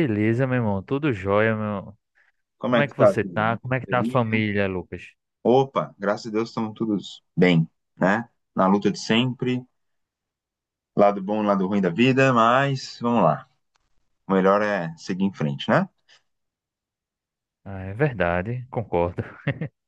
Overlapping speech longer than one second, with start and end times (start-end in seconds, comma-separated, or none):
2.6-4.2